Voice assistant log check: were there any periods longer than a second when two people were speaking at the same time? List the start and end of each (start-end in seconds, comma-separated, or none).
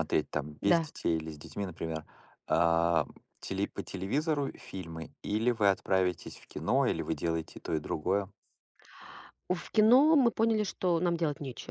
none